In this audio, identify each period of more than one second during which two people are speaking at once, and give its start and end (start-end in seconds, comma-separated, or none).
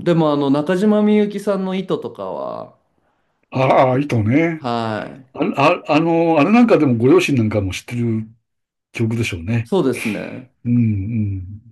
none